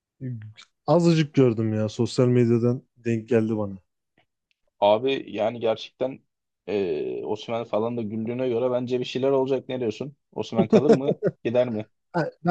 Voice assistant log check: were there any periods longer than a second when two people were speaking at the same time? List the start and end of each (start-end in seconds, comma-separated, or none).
none